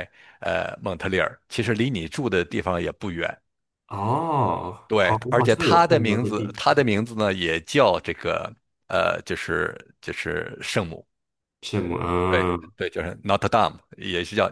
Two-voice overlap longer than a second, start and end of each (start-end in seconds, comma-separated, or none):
4.9-6.8